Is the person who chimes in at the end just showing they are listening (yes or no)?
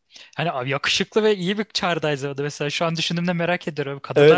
no